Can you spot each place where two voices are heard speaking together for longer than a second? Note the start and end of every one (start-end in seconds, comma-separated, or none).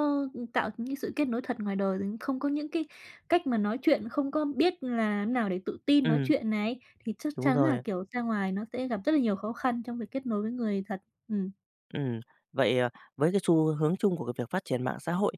none